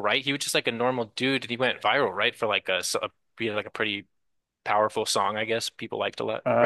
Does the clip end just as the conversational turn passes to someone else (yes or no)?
yes